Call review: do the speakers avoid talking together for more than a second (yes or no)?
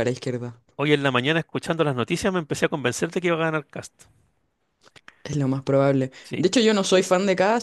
yes